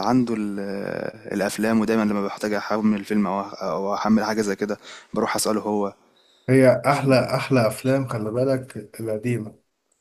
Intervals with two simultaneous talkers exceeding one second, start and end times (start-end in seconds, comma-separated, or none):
none